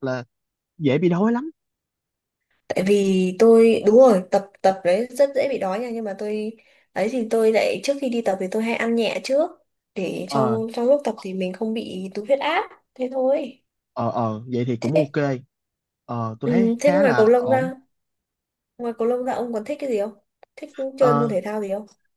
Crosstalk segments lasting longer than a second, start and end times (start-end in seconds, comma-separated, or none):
16.4-17.7